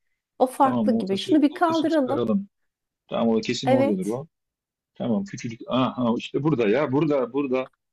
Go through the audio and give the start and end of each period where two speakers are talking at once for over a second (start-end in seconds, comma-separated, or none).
0.6-2.2